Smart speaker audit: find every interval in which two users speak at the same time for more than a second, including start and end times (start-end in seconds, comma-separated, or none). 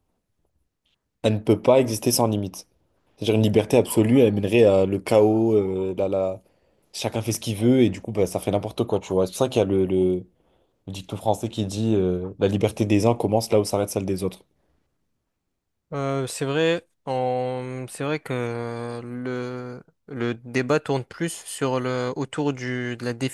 none